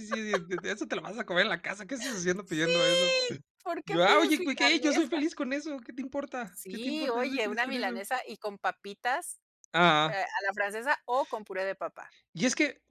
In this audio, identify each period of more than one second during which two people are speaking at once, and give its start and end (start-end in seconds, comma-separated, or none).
3.8-5.2, 6.5-8.0